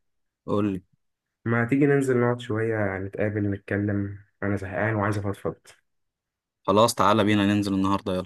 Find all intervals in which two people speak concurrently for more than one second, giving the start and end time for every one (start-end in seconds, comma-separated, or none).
none